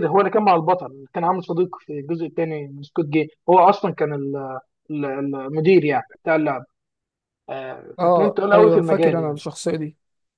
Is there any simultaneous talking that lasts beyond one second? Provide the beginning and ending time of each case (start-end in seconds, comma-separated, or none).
8.0-9.4